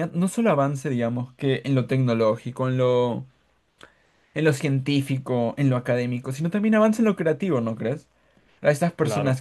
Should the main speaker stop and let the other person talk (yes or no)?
no